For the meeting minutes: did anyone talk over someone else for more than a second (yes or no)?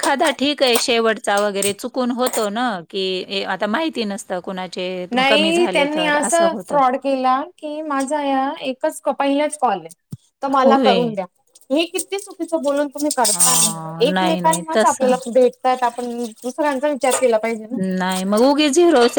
yes